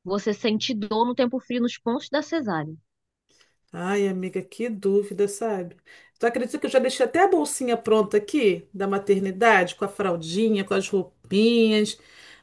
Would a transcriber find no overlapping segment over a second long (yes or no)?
yes